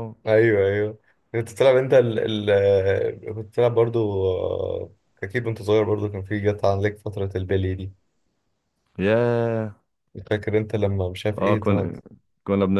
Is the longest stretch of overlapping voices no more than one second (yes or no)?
yes